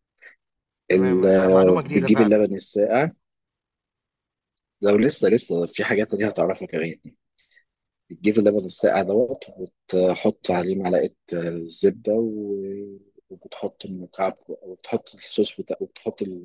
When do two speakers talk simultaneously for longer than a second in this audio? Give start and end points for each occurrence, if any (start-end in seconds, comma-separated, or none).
0.9-2.5